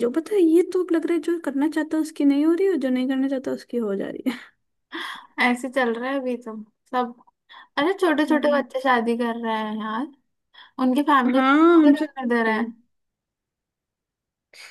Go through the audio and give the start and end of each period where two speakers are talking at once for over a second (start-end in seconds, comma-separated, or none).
11.3-12.7